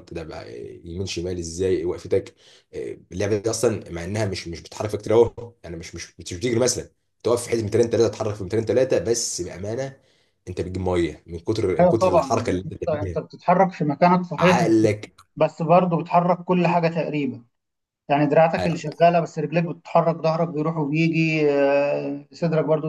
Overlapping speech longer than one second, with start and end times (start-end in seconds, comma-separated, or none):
11.8-13.2